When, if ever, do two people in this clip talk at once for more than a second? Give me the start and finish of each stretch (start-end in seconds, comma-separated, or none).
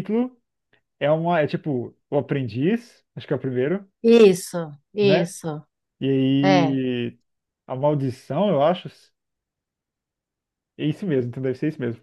none